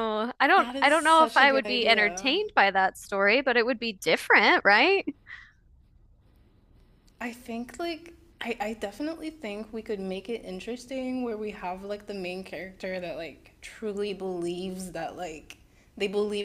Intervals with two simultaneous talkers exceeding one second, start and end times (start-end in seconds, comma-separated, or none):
0.6-2.4